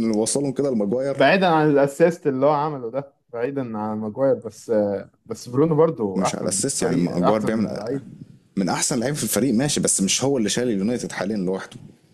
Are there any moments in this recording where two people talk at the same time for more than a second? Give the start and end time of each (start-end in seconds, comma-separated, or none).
6.2-7.8